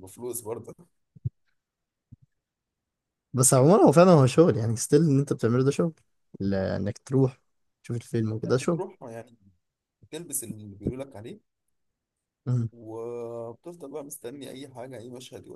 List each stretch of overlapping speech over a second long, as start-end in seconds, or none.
none